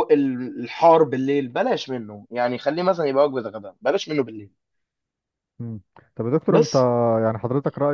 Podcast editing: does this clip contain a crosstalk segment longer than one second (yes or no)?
no